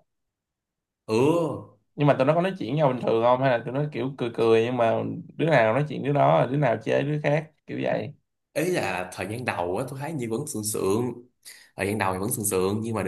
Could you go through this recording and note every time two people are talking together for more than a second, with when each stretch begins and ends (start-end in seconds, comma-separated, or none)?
none